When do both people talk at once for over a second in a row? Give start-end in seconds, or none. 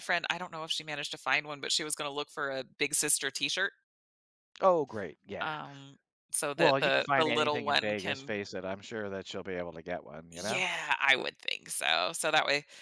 6.6-8.3